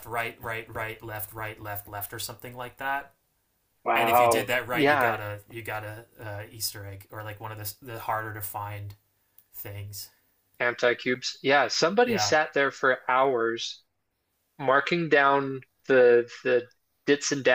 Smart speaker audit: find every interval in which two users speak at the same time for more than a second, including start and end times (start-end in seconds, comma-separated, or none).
4.0-5.2